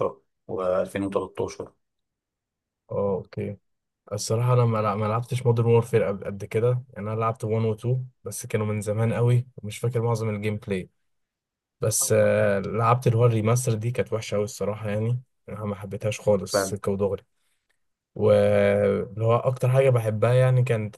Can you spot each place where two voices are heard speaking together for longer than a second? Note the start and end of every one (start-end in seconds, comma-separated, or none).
none